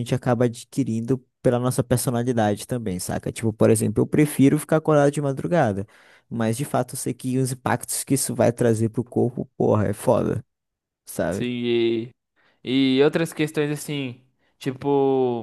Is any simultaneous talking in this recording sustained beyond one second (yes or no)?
no